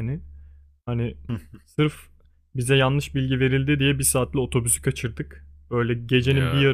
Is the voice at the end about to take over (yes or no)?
no